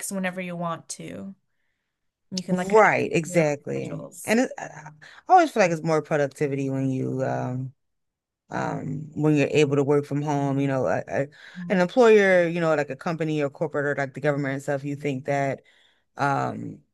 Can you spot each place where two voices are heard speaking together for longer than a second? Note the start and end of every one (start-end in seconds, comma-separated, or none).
2.5-4.4